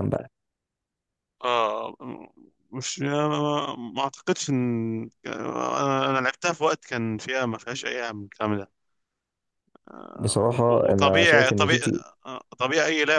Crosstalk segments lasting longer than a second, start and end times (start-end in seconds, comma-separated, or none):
10.2-11.8